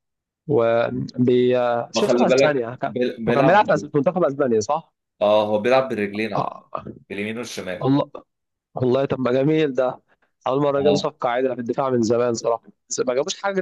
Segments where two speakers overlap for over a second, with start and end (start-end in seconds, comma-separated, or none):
1.9-3.7